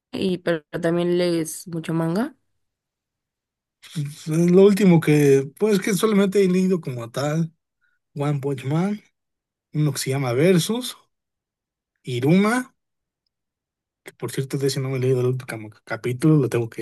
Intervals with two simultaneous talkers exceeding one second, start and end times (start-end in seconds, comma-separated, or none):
none